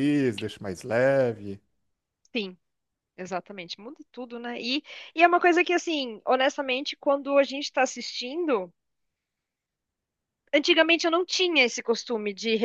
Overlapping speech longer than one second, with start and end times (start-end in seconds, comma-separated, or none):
none